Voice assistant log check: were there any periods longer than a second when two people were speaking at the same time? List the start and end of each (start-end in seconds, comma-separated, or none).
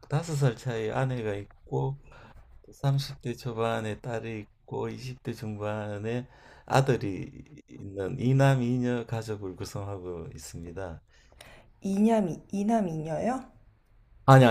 none